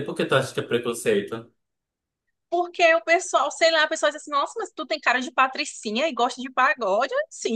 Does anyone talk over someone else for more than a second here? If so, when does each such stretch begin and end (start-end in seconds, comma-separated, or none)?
none